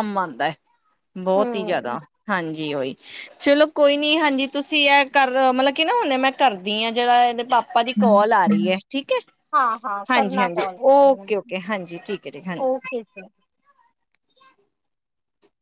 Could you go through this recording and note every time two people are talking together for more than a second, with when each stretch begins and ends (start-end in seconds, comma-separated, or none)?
10.1-11.5